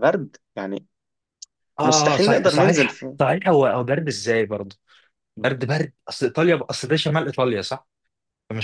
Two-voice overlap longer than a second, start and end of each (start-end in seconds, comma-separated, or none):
1.8-3.2